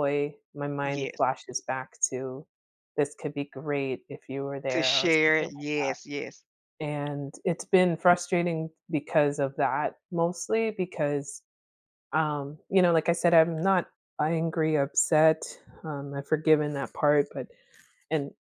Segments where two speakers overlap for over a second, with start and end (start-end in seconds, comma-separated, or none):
4.7-6.0